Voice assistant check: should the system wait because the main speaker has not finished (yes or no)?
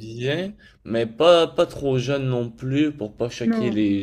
yes